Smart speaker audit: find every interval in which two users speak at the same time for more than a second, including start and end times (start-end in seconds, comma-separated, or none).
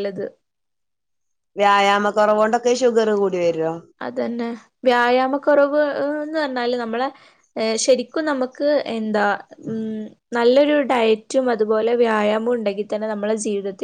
none